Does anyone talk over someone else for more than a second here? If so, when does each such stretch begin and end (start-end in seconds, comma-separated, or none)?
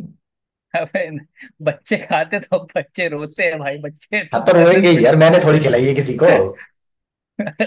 4.3-5.8